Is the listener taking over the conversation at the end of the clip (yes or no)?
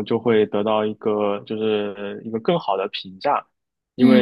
no